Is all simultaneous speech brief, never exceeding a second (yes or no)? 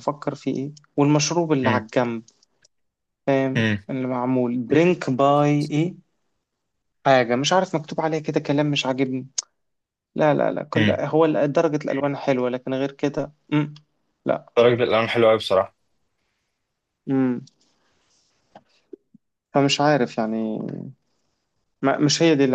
yes